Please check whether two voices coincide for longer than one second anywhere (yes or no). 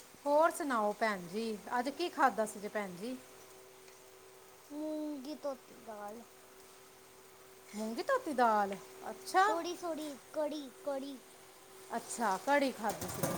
no